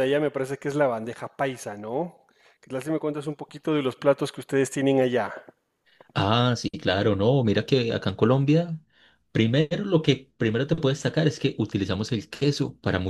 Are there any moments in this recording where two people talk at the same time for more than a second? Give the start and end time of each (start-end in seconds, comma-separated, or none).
none